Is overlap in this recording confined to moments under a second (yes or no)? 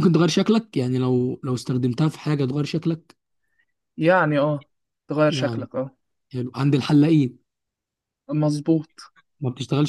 yes